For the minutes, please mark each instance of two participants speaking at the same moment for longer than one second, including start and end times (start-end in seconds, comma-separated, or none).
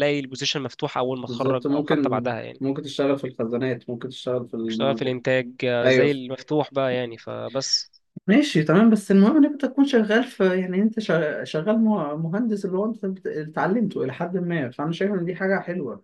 1.3-2.6